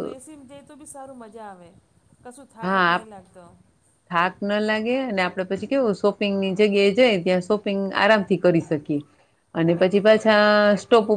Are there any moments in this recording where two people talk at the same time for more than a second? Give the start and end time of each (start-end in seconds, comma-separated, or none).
none